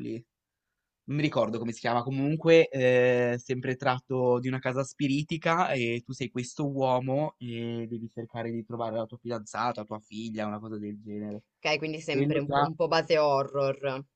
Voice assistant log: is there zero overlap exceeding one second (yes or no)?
yes